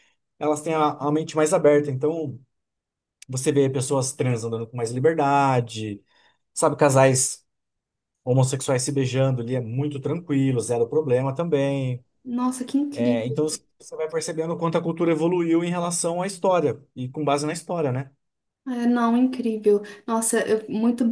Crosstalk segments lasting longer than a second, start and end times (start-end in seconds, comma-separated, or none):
none